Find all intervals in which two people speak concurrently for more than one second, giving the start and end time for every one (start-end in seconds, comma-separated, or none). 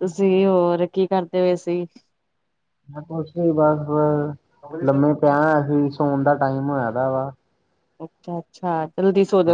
none